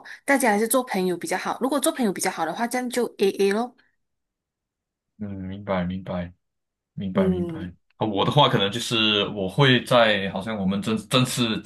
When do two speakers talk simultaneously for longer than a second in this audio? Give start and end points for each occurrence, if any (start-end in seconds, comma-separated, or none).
none